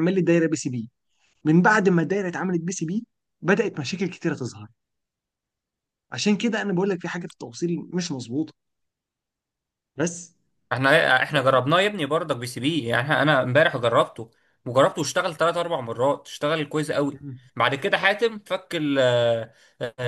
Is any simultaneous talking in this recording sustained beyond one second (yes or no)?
no